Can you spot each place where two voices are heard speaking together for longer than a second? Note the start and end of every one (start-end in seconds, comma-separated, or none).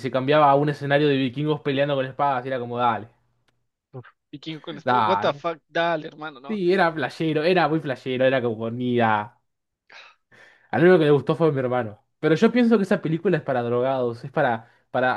none